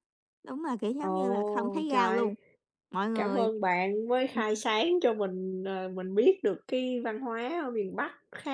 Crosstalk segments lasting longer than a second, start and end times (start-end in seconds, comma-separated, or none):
1.0-2.3